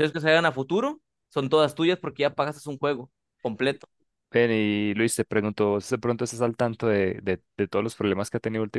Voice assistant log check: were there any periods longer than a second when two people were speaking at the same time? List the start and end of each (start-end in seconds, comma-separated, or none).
none